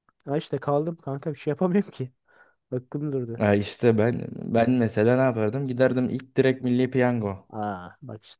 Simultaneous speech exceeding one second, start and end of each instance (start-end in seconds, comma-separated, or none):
none